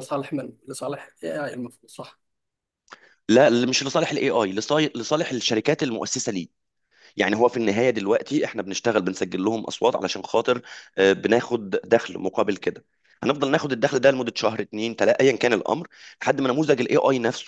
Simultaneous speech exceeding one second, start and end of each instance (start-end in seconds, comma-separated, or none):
none